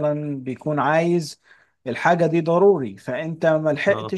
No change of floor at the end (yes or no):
yes